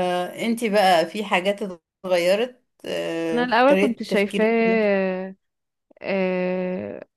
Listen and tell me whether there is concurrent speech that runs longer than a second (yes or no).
yes